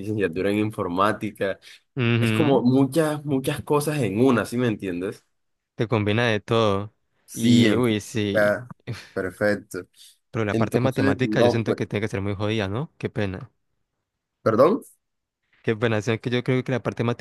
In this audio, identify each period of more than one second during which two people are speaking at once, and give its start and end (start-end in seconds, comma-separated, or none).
7.3-8.6, 10.5-11.8